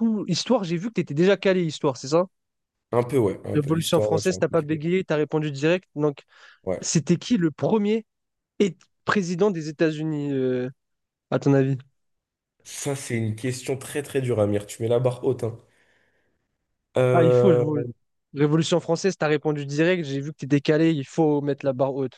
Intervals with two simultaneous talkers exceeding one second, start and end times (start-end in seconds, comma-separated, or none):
3.5-4.8